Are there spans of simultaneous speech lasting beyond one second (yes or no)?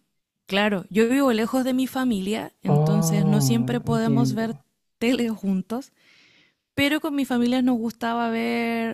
yes